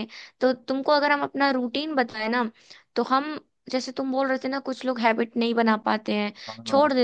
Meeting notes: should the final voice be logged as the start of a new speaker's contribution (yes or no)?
no